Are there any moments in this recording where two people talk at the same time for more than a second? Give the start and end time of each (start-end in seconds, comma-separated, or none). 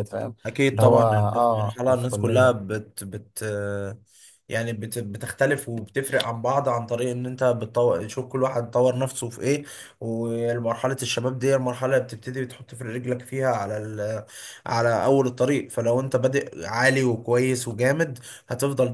0.7-2.6